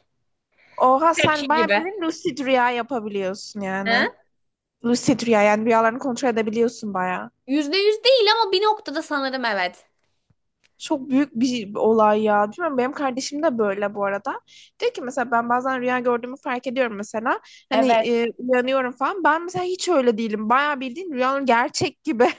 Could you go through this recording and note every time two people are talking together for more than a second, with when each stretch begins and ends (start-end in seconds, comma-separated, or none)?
none